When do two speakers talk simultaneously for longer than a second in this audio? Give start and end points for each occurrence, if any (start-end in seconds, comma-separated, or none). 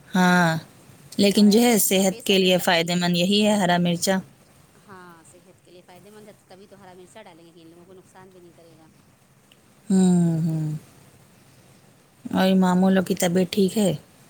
1.4-3.0